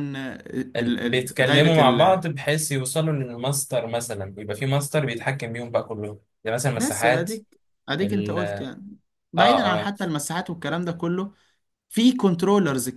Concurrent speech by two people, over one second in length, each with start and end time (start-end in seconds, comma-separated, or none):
0.8-2.2